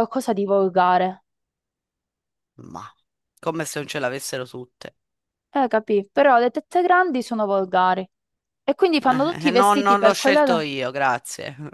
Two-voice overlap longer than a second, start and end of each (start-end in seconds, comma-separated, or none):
9.1-10.7